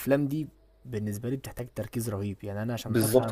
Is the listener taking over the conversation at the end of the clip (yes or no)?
yes